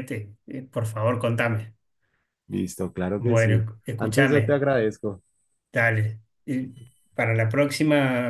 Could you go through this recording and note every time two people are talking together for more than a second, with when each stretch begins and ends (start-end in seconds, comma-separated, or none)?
3.2-4.6